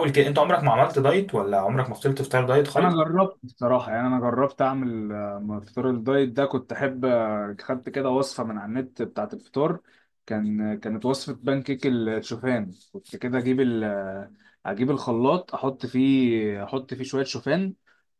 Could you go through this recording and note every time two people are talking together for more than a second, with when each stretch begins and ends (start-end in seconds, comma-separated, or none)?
none